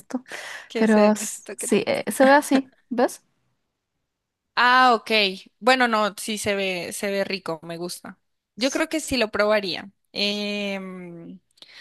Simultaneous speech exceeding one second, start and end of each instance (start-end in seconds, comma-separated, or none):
0.8-2.0